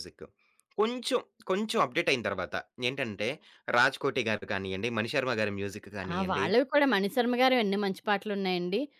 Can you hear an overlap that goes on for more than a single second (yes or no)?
no